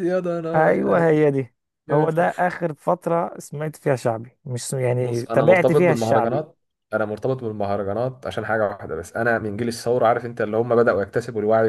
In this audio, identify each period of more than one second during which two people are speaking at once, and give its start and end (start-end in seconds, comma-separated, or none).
5.0-6.4